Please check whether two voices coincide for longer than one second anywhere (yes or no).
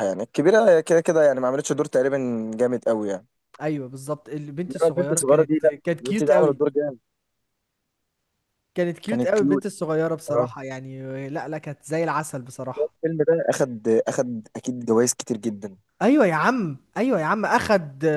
yes